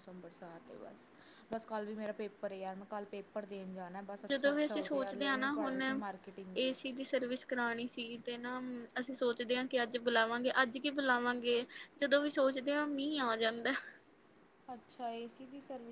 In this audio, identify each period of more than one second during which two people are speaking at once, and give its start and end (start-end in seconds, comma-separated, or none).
4.3-5.8